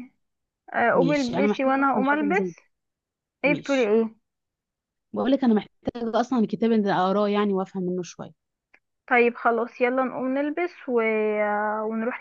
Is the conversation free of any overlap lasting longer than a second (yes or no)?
no